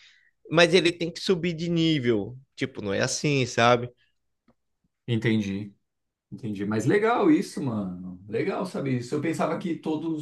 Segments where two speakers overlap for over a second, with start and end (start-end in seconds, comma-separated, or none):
none